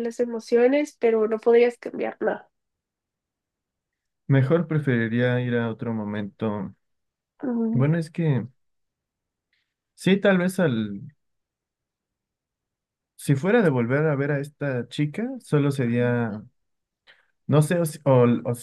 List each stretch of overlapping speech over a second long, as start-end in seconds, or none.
none